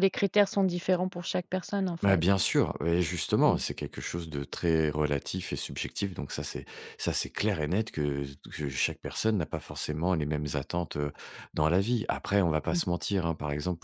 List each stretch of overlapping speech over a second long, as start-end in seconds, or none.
none